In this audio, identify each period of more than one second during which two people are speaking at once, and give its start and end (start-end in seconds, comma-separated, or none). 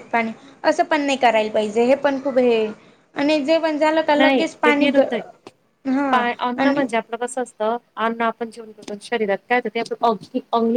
none